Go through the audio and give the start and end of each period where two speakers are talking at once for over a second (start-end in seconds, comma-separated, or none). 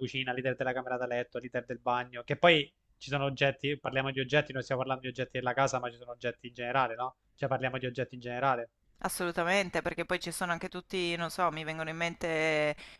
none